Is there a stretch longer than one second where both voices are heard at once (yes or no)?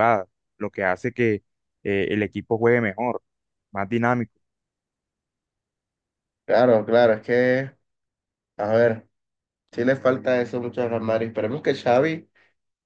no